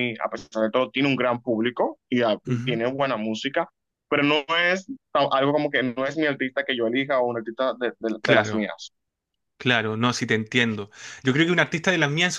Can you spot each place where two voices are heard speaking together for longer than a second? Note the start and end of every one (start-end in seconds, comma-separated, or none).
none